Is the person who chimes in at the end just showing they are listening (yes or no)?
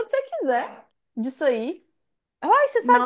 yes